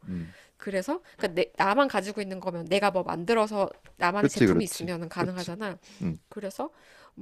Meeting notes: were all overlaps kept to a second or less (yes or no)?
no